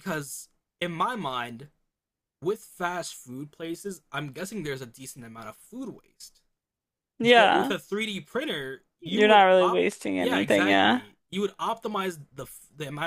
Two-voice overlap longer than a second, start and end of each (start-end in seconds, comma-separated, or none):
9.0-11.0